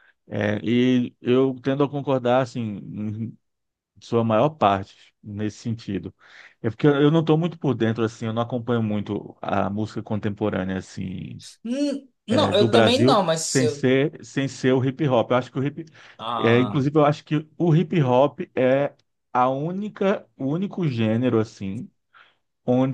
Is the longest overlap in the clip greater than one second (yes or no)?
yes